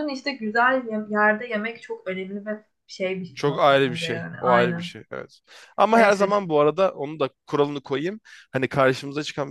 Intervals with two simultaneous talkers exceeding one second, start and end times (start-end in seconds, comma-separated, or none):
3.3-4.9